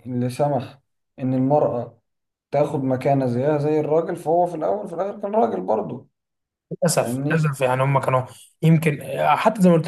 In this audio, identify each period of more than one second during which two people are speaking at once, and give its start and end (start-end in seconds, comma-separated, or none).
none